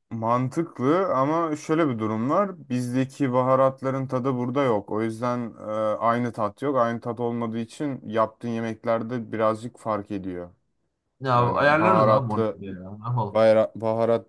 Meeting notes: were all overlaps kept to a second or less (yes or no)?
no